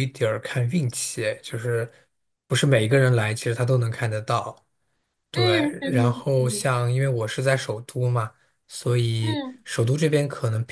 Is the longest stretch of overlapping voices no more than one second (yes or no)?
no